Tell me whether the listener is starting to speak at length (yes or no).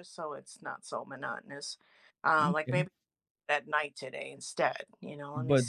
yes